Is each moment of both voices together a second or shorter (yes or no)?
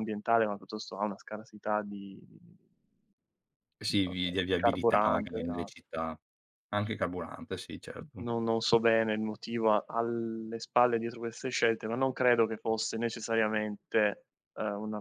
no